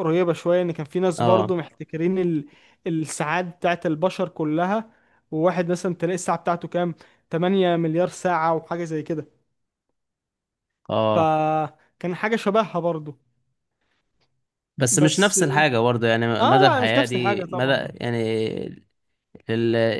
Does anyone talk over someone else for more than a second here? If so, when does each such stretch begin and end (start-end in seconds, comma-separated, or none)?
16.4-17.9